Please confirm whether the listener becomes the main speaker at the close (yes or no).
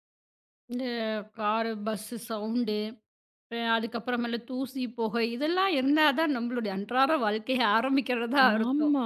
no